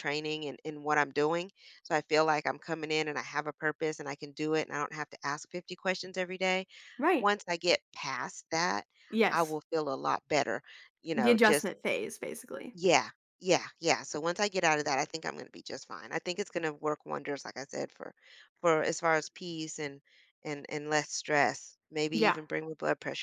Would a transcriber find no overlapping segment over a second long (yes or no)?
yes